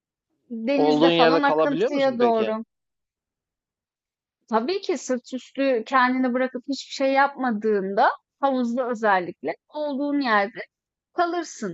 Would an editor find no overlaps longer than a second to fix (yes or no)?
no